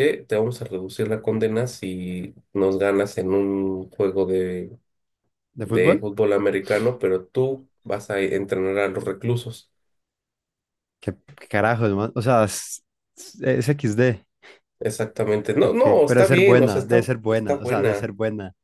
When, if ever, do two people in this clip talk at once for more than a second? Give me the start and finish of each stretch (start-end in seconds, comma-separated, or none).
15.6-18.1